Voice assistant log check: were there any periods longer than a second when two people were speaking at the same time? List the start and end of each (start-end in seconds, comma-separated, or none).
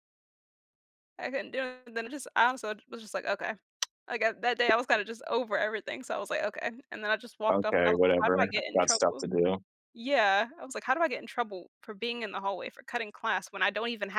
7.5-9.2